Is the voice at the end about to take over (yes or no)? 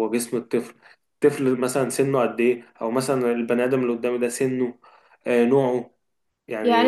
yes